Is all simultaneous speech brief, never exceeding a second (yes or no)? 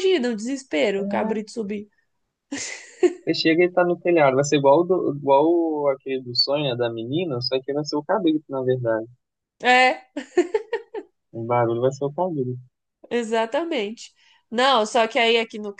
yes